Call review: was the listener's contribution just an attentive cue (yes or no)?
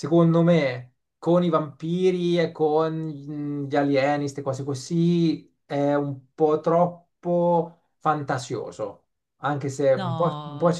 yes